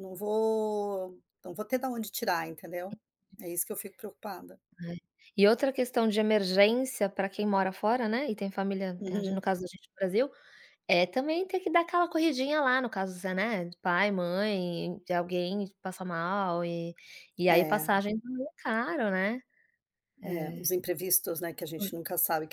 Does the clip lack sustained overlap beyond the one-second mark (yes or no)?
yes